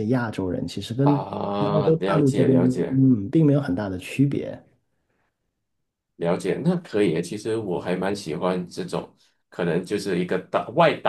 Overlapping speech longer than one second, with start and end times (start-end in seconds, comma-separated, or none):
1.0-3.0